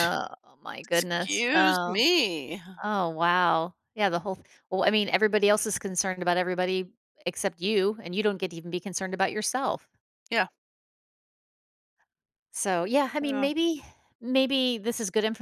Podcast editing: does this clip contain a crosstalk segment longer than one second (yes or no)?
yes